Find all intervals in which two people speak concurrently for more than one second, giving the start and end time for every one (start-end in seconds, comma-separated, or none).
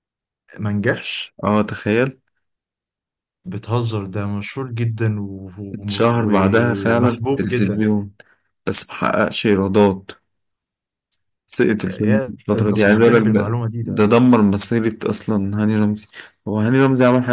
5.9-7.7, 11.8-14.0